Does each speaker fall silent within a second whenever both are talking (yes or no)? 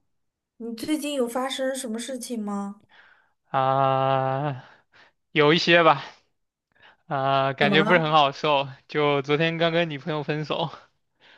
yes